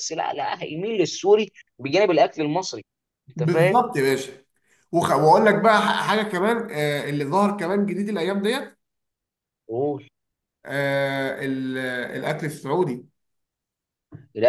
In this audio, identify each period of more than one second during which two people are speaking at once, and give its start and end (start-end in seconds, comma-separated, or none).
none